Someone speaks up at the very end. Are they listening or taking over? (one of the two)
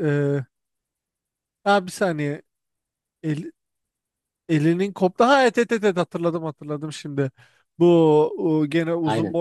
listening